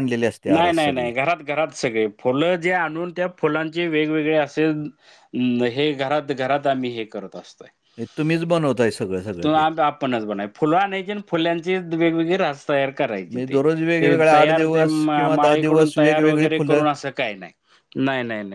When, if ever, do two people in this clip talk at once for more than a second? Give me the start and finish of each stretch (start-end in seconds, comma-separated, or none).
13.3-16.8